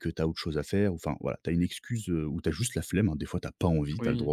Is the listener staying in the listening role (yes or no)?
no